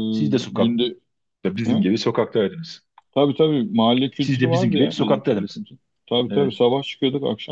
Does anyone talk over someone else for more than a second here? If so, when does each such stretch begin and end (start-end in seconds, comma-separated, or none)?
4.2-5.6